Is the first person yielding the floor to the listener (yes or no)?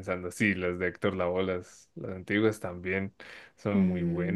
yes